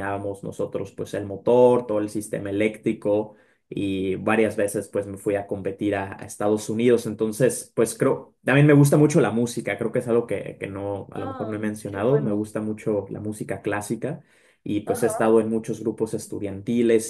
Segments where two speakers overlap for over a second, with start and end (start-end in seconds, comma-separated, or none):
11.1-12.4